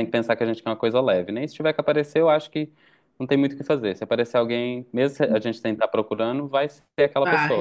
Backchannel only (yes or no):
no